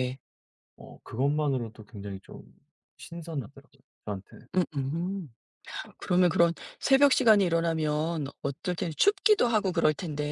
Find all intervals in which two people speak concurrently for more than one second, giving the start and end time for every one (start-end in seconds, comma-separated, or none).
none